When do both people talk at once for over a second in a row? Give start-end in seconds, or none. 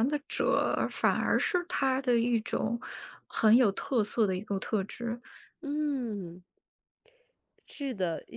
none